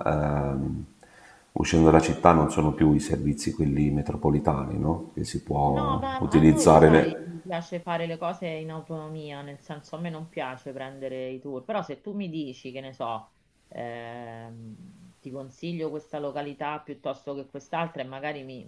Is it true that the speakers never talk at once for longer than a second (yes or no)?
no